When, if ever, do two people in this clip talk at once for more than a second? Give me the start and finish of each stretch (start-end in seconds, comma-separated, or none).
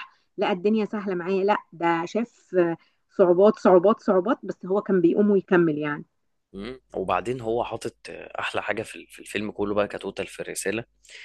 none